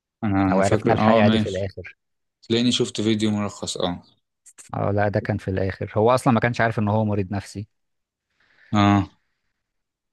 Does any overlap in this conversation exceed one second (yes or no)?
yes